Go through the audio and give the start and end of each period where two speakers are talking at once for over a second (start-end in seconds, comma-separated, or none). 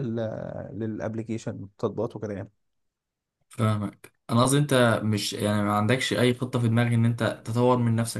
none